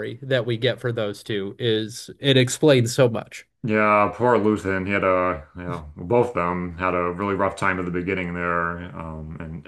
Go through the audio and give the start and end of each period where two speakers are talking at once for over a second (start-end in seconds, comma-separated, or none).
none